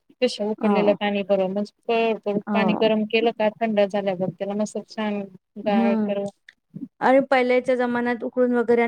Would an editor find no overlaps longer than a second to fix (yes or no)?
yes